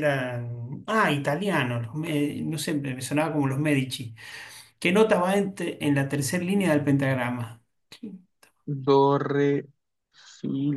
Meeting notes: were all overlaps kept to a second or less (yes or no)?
yes